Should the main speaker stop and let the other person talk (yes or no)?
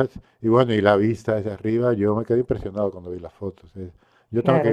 yes